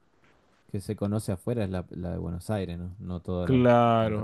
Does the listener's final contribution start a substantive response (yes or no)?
yes